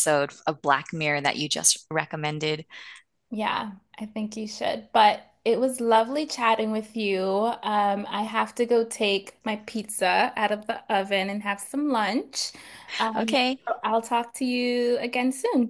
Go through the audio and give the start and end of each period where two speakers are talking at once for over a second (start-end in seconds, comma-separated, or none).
none